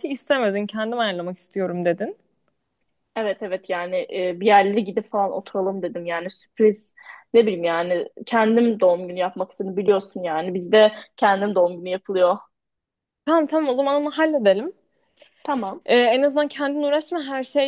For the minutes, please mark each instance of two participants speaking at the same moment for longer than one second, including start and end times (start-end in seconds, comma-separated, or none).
none